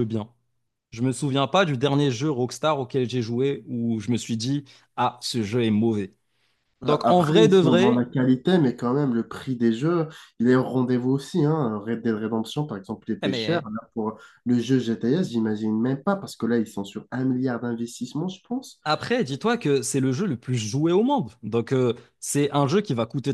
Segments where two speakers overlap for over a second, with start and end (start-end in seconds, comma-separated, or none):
6.8-8.1